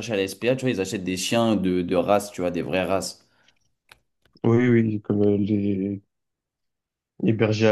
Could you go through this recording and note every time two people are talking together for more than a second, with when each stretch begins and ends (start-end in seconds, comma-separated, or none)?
none